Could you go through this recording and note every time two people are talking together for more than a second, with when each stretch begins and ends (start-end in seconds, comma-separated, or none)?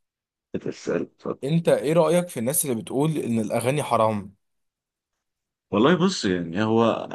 none